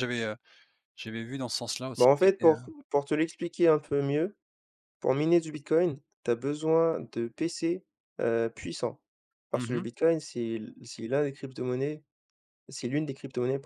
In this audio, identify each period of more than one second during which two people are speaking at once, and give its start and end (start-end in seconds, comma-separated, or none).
none